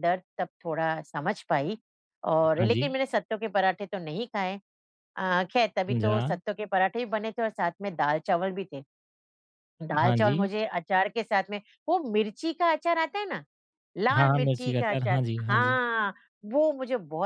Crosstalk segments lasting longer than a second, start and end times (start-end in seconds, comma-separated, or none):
14.2-15.8